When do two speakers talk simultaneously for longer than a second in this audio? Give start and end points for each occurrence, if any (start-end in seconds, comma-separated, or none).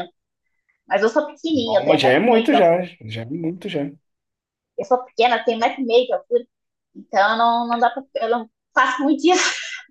1.5-2.9